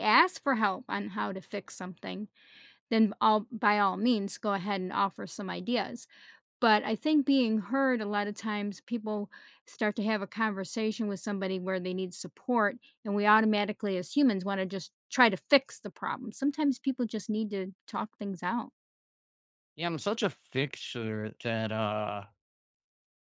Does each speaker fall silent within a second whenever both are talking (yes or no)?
yes